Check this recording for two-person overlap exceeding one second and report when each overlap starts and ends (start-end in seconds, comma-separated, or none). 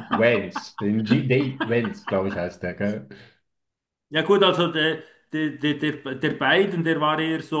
none